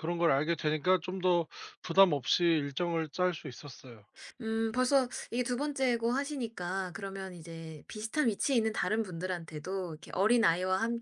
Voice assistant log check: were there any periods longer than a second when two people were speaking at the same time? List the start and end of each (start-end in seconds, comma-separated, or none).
none